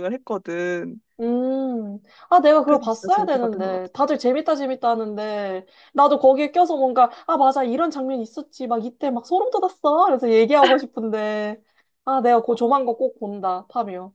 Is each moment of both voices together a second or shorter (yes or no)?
no